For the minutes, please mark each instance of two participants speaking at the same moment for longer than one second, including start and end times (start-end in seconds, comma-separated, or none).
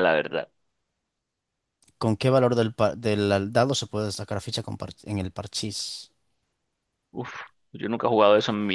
none